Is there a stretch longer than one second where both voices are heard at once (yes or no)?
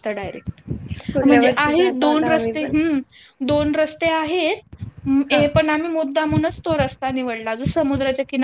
yes